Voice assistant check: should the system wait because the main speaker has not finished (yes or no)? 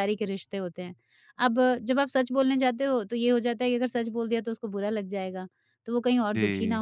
yes